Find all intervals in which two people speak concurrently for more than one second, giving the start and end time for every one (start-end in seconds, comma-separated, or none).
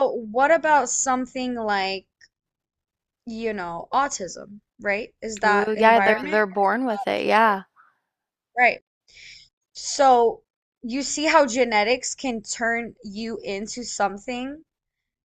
5.4-7.6